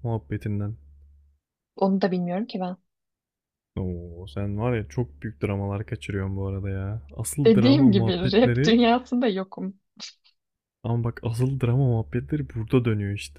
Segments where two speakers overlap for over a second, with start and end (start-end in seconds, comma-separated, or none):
7.5-8.8